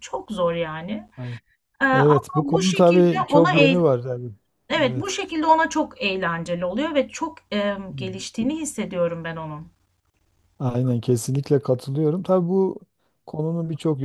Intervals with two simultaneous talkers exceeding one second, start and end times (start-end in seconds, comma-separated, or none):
1.9-3.8